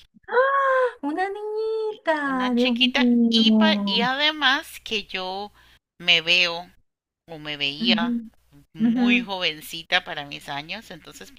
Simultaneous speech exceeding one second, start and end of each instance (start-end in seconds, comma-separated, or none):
2.2-4.1